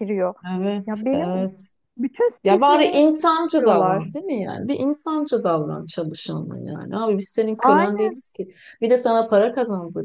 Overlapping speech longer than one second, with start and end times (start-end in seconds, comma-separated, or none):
2.4-4.1